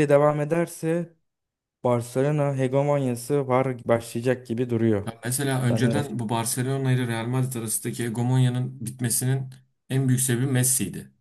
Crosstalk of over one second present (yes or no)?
no